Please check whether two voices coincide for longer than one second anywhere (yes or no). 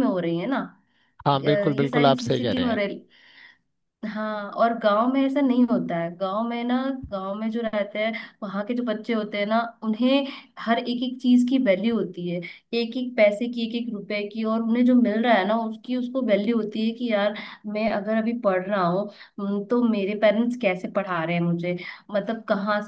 yes